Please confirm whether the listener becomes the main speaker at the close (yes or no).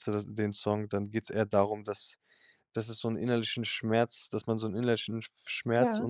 no